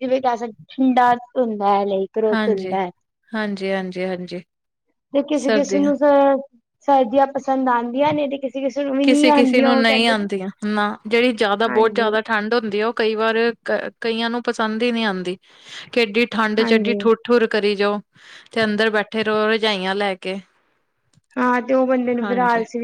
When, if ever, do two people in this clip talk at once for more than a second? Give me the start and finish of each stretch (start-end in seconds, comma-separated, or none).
9.0-10.3